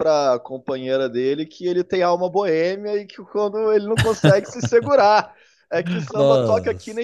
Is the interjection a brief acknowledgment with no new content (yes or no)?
yes